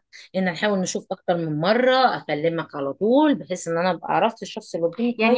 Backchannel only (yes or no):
no